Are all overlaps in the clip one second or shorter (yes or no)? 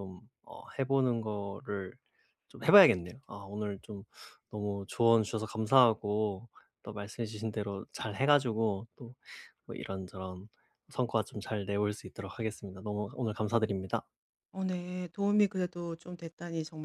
yes